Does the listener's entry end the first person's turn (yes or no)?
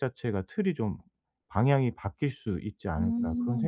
yes